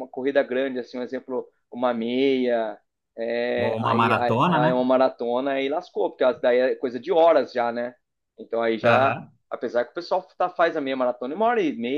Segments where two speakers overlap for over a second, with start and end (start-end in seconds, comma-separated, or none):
3.5-4.8